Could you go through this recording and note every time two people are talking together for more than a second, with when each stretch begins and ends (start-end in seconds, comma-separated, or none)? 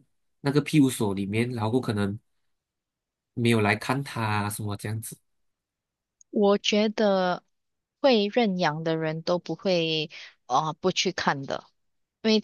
none